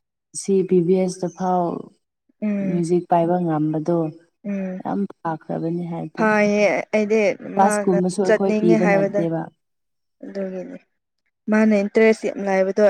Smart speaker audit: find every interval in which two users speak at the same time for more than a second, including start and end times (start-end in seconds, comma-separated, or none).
7.6-9.2